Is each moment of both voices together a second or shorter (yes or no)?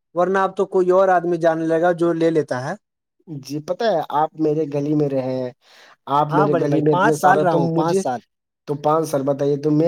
no